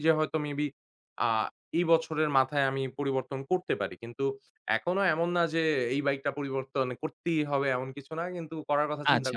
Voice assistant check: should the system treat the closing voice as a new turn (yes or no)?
yes